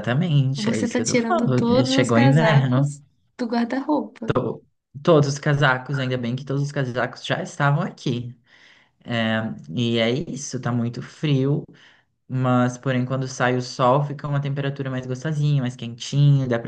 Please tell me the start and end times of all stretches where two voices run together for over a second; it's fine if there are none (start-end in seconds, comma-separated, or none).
0.6-2.9